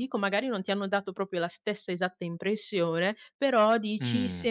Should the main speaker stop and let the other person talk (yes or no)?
no